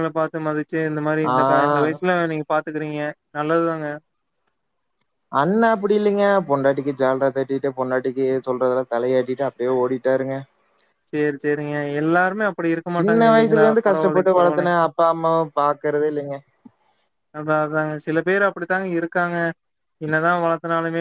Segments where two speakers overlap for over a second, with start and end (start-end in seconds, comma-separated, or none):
13.0-14.8